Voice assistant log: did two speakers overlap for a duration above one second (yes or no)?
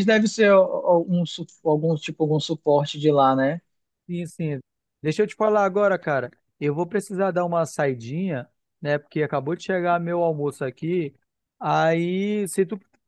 no